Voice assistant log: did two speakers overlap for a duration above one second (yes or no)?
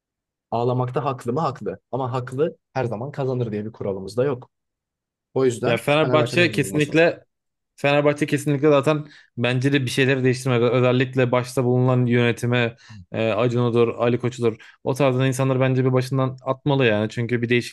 yes